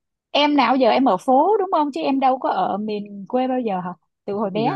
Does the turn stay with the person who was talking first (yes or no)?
no